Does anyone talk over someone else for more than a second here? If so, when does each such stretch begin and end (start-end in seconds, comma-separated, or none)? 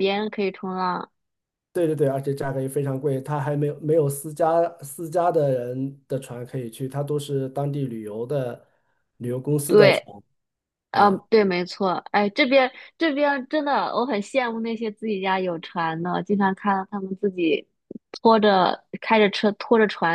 none